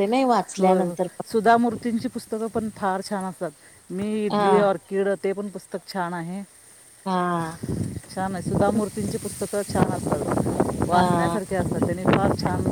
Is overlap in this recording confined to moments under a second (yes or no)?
yes